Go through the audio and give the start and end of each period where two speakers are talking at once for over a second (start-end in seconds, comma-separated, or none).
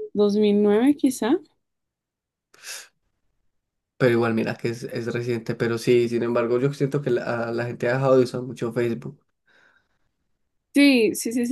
none